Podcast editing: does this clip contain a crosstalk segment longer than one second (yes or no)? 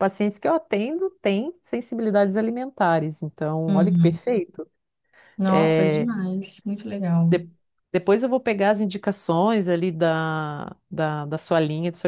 no